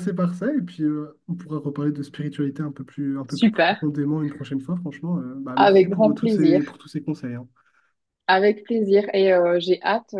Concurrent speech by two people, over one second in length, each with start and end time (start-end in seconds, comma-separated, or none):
5.6-6.8